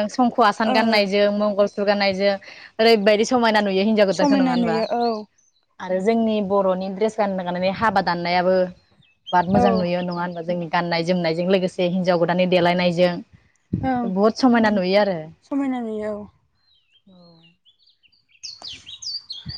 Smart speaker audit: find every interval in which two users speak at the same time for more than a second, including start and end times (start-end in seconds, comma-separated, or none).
none